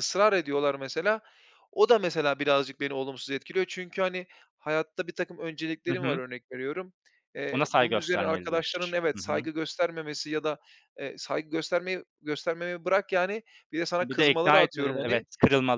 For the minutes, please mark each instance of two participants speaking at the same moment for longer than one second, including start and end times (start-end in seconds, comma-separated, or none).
7.5-9.5, 14.0-15.2